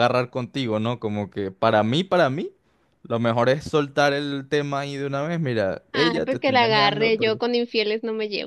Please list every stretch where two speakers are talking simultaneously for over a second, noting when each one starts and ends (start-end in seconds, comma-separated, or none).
5.9-7.4